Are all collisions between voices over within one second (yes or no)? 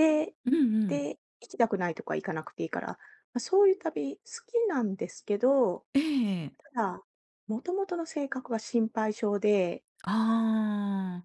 yes